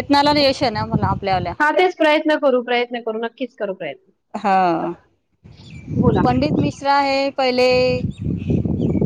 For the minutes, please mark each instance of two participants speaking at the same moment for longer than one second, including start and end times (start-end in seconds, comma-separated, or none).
none